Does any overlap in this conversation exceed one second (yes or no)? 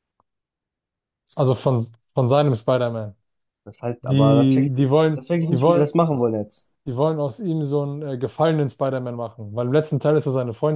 yes